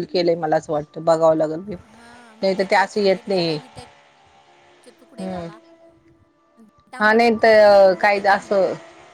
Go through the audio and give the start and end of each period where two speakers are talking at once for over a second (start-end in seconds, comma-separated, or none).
7.0-8.6